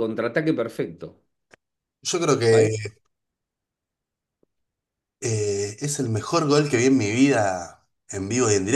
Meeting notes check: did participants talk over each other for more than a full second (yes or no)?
no